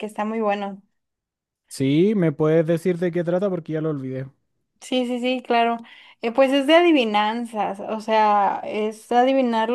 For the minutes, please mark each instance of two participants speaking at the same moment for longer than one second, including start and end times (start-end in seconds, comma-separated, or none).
none